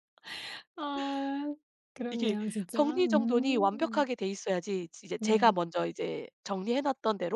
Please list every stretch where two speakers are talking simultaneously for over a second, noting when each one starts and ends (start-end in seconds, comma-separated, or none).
2.1-4.1